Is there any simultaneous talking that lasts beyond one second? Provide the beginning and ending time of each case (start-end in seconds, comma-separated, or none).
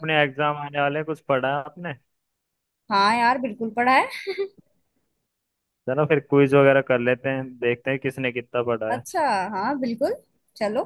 none